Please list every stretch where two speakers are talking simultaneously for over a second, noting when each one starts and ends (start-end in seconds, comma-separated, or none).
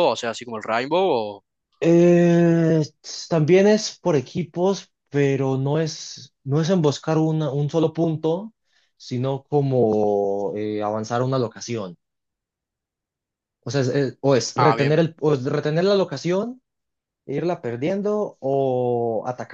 none